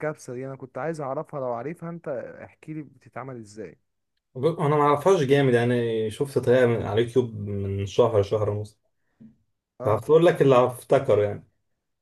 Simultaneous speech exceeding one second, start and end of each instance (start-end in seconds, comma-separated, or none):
none